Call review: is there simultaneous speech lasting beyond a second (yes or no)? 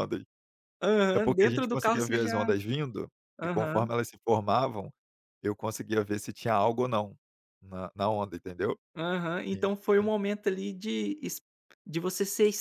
yes